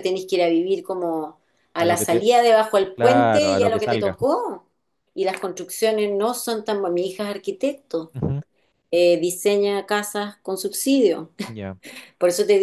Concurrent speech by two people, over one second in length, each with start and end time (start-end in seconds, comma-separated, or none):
2.9-4.2